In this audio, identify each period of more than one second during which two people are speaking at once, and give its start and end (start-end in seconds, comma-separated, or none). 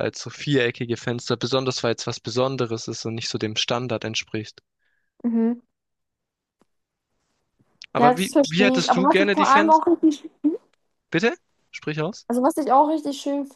8.0-9.8